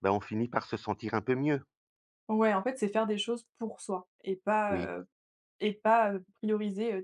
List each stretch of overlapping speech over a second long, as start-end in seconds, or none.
none